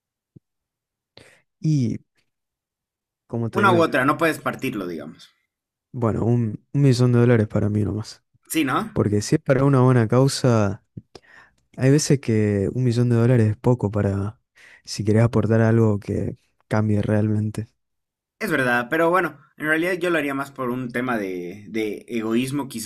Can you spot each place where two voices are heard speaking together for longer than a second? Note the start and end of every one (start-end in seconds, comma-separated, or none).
none